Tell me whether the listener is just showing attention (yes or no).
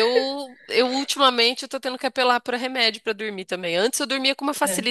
yes